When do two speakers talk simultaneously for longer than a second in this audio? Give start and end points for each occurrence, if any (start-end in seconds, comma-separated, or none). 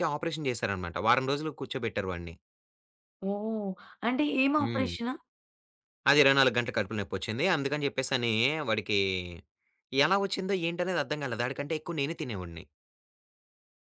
none